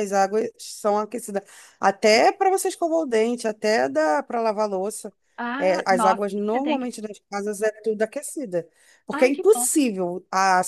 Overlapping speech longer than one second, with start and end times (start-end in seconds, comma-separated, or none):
5.6-6.9